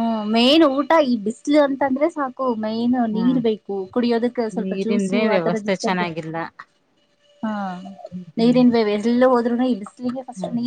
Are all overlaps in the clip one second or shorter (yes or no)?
no